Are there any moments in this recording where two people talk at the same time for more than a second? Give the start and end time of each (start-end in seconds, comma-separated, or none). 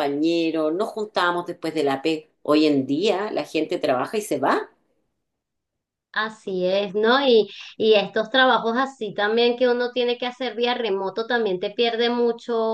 none